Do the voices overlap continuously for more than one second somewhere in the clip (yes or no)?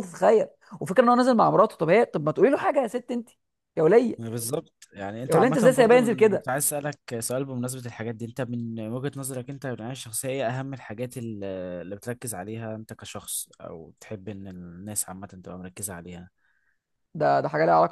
yes